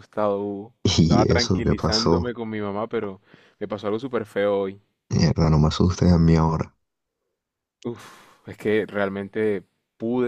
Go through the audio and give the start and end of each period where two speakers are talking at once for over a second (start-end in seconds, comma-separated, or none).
0.8-2.3